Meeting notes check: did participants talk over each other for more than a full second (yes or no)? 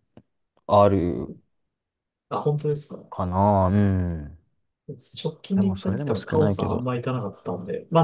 yes